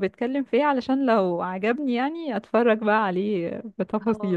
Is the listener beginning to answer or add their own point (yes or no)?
yes